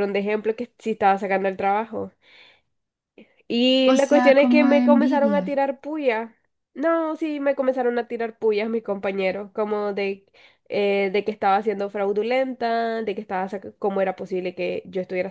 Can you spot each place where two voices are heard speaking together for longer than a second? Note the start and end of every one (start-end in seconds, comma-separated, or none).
3.9-5.6